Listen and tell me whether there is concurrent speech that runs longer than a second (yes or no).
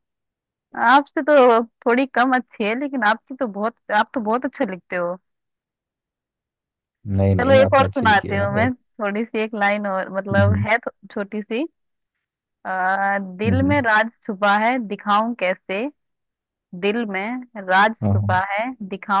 yes